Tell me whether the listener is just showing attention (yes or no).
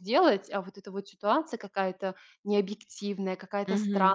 yes